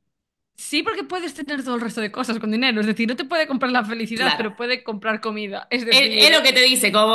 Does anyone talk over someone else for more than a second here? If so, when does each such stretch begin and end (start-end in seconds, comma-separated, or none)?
none